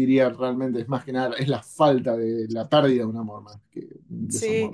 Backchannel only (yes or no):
no